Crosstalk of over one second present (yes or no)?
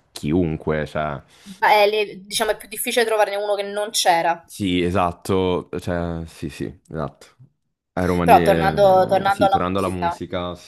yes